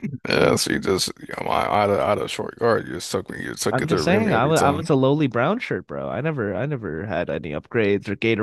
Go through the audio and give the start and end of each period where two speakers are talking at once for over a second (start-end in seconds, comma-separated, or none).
3.7-4.9